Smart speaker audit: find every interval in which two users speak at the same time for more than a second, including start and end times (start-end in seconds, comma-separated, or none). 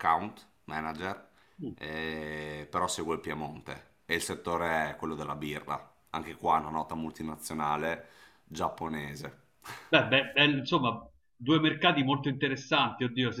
none